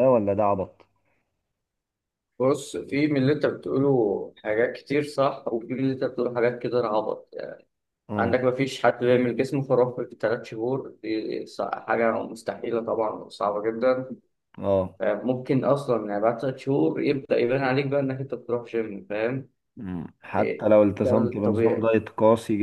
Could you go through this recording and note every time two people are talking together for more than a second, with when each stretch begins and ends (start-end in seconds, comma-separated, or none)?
20.4-21.9